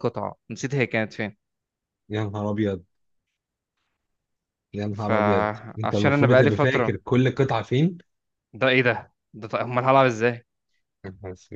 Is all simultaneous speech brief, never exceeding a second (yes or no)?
no